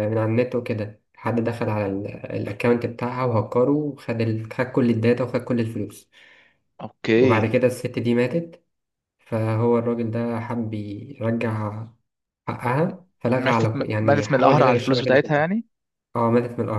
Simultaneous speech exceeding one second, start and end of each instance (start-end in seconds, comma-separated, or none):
13.3-15.5